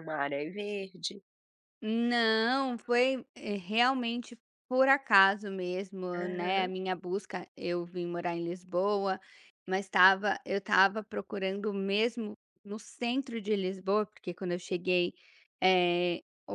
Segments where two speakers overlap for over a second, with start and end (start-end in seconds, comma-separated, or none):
none